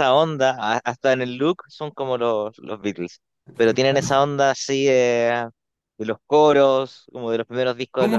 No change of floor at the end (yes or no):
no